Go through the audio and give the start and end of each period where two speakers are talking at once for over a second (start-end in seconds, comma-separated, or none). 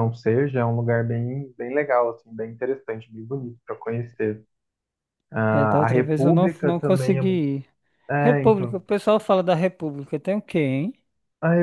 5.5-7.4